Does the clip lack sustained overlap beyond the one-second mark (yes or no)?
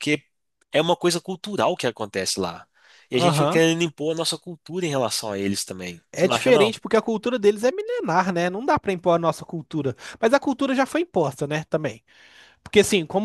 yes